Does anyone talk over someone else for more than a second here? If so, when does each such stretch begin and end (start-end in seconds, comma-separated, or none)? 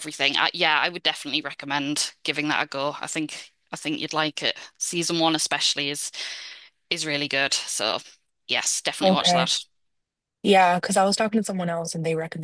none